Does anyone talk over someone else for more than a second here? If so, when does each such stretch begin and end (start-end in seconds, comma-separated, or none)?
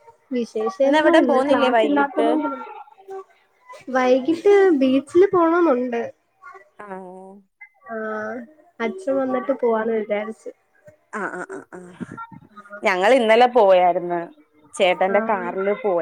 0.8-2.3